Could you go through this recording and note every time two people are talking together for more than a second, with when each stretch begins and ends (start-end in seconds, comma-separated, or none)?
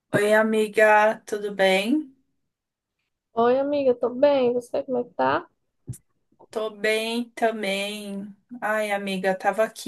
none